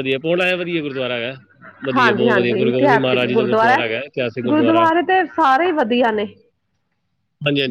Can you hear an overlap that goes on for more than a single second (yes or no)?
yes